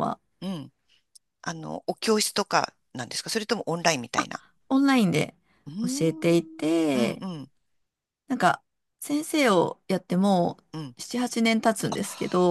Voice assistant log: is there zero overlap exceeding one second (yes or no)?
no